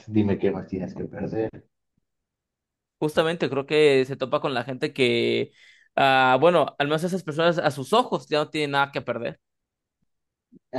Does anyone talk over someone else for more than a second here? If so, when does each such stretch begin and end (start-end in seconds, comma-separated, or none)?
none